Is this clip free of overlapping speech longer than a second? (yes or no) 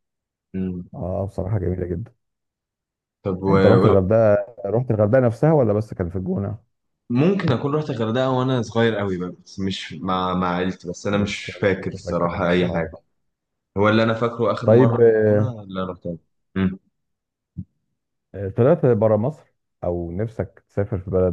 no